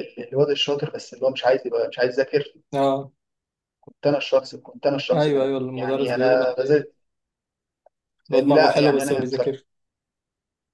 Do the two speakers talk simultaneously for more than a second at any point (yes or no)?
yes